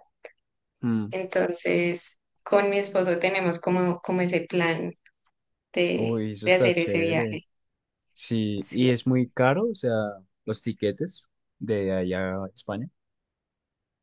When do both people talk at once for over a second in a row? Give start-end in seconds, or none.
6.0-7.4